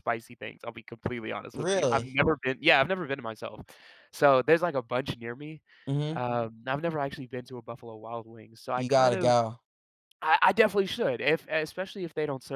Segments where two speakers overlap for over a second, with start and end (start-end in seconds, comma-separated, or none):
none